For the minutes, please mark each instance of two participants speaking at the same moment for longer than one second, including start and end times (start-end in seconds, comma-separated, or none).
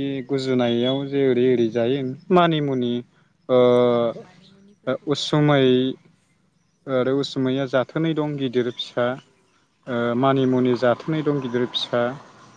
none